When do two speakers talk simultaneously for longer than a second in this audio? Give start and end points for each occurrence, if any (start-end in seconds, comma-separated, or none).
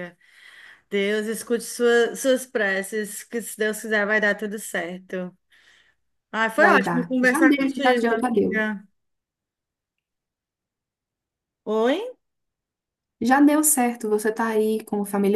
6.6-8.7